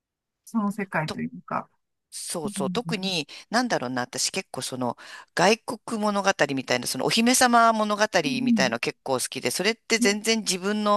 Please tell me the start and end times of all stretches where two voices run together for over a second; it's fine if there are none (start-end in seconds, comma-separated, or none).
none